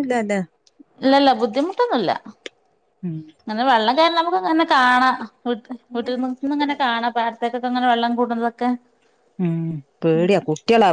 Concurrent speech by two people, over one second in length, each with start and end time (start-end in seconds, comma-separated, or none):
none